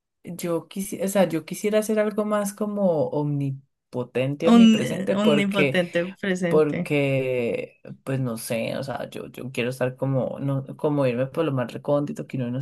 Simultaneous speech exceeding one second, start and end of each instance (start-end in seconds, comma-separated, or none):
4.4-5.8